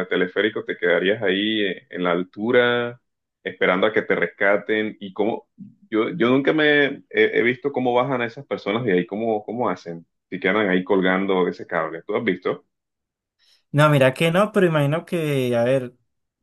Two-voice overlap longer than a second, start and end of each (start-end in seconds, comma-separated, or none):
none